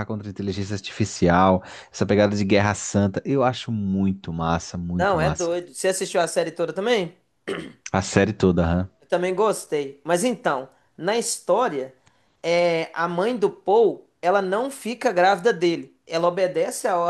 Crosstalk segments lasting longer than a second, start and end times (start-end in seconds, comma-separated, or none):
none